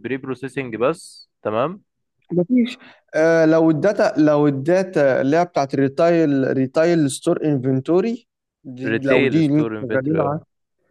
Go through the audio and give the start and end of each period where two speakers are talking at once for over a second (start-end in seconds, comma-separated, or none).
8.9-10.4